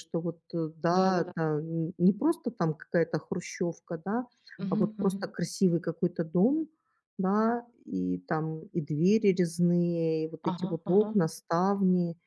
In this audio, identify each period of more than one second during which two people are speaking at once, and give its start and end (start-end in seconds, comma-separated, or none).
none